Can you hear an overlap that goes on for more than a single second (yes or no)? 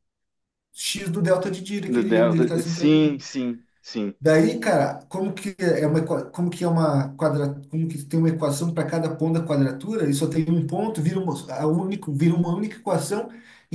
yes